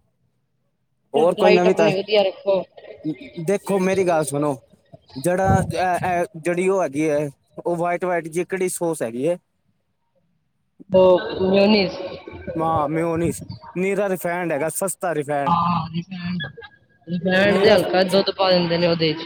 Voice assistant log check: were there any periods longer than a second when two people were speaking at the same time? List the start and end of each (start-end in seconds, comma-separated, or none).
1.4-2.6